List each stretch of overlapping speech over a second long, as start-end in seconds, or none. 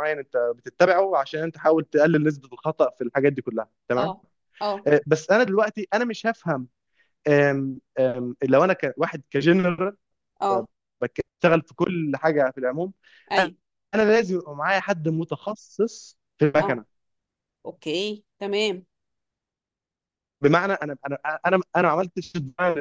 none